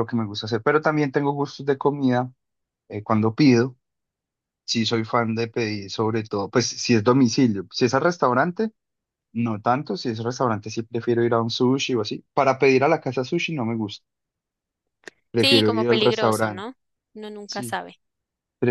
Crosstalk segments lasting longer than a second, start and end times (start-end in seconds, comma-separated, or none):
15.4-16.7